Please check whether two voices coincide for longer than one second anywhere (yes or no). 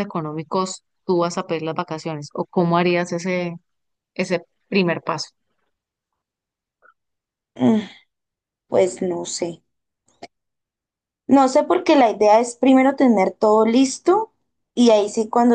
no